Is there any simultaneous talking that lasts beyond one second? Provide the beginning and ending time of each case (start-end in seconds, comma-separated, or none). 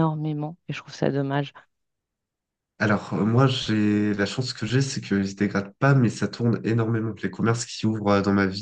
none